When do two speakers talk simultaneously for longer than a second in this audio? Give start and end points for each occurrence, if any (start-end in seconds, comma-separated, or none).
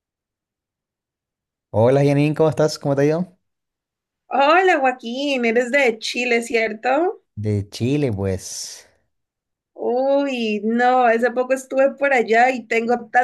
none